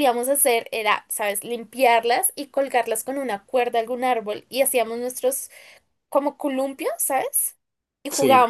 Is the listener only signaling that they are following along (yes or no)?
yes